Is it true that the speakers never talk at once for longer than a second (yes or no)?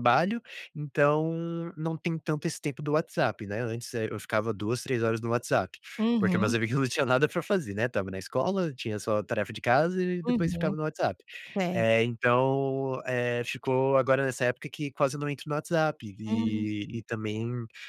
yes